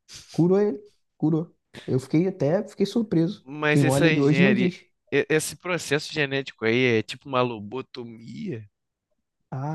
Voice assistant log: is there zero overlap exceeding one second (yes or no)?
no